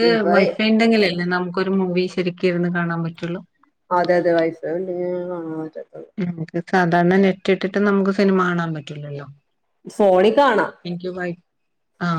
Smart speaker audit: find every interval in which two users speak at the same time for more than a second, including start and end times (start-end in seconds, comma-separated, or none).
none